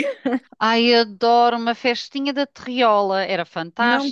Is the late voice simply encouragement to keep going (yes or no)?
no